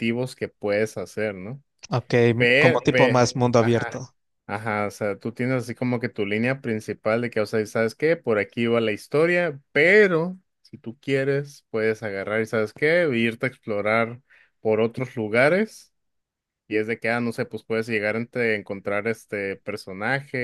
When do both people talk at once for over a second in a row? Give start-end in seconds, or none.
2.4-4.0